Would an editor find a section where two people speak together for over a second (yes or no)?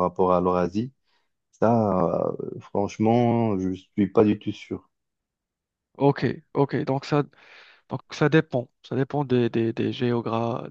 no